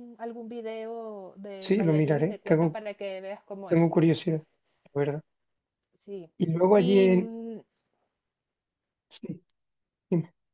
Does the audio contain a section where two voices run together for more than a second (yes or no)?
yes